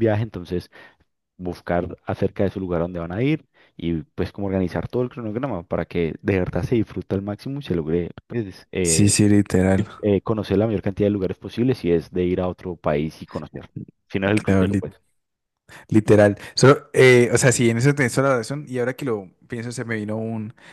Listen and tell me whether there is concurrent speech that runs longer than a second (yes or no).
no